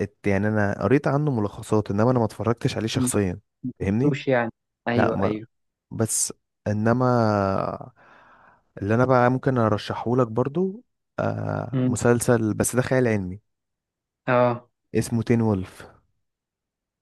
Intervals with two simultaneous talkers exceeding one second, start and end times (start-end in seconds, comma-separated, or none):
none